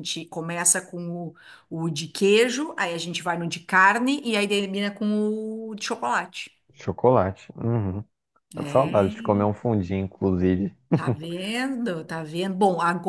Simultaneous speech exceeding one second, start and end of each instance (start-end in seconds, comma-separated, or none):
none